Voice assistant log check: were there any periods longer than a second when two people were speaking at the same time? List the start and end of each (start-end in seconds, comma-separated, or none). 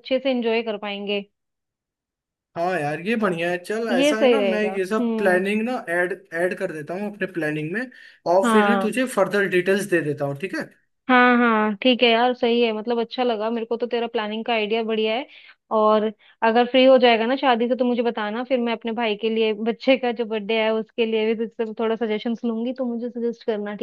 3.9-5.4